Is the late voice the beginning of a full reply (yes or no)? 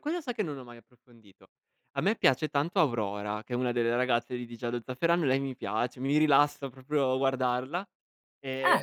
no